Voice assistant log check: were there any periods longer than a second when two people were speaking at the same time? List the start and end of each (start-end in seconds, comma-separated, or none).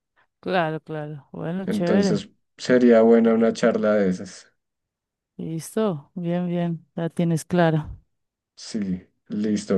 none